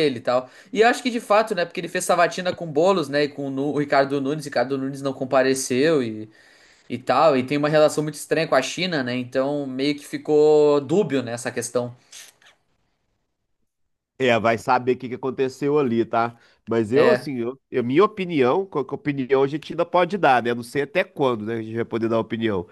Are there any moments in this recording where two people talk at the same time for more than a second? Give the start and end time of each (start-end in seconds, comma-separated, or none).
none